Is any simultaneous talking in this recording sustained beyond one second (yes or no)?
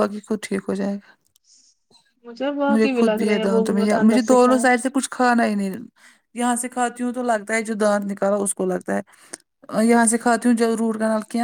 yes